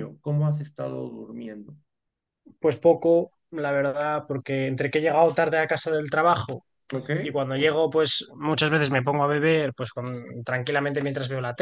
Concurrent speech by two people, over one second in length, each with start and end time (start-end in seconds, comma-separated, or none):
none